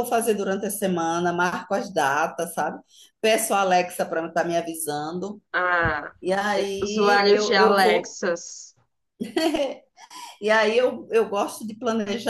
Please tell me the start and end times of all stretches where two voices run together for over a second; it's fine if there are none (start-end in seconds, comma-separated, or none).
6.8-8.2